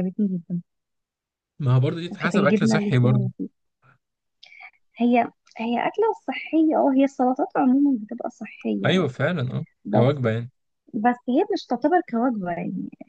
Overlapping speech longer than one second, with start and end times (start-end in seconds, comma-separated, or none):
2.1-3.3